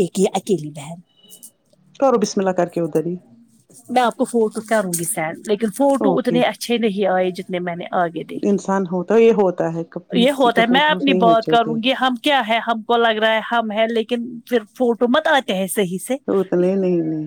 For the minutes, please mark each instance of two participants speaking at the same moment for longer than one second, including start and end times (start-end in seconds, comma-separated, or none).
10.2-11.8